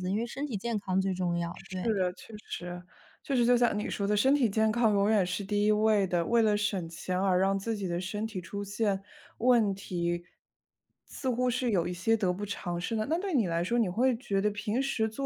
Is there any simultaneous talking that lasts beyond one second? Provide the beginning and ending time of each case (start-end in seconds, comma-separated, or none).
none